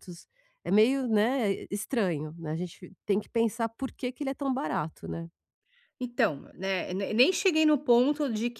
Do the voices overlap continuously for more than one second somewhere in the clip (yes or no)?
no